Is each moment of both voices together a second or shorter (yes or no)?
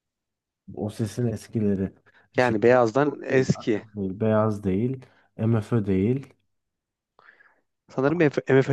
no